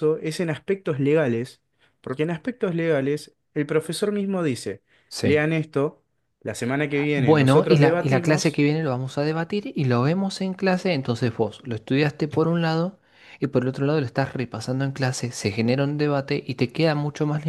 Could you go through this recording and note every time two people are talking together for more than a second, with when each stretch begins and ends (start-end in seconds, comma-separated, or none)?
7.2-8.6